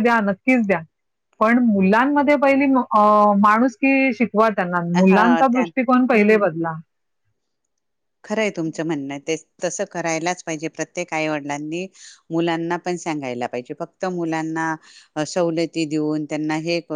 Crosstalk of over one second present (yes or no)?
yes